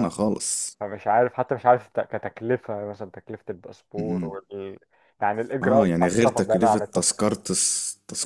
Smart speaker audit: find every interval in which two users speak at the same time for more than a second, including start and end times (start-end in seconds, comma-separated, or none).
5.6-7.2